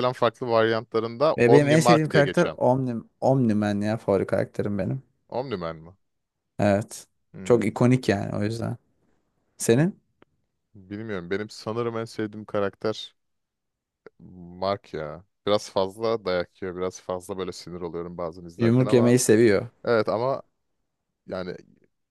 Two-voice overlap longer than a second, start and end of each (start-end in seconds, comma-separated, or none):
1.4-2.6